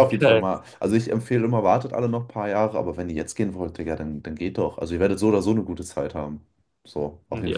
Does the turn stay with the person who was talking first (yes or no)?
no